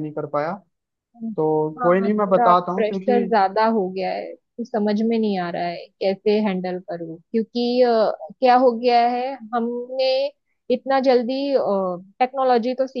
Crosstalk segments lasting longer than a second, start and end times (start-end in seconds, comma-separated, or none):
1.8-3.2